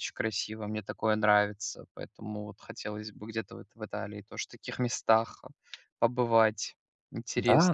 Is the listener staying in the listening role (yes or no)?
no